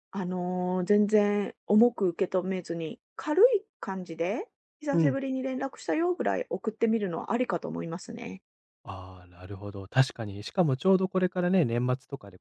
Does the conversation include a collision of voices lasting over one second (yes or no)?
no